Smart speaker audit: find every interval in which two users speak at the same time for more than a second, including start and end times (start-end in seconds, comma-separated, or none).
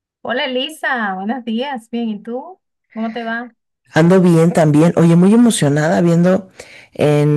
none